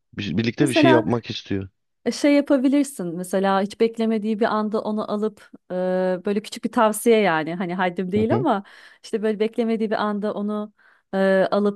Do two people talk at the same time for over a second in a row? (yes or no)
no